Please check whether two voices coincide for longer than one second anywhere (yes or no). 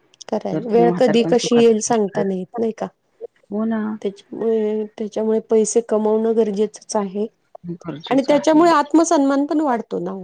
yes